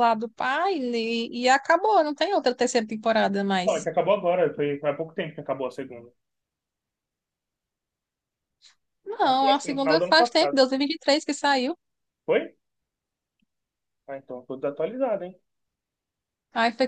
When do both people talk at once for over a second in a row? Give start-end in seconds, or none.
9.2-10.6